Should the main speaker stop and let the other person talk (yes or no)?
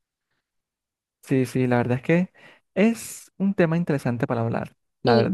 yes